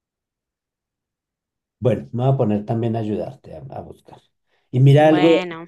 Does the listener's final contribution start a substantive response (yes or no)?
no